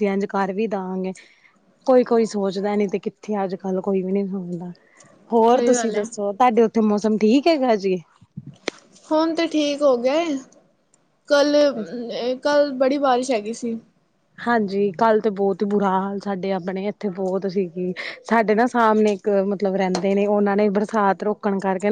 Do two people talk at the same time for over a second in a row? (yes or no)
no